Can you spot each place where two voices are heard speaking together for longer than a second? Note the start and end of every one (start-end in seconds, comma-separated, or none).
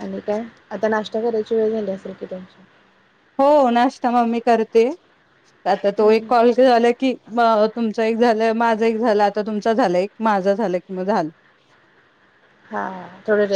none